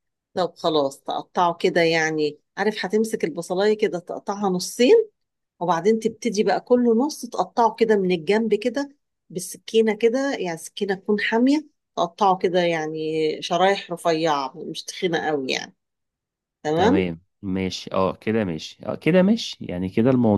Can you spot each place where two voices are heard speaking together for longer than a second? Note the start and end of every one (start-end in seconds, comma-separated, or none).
none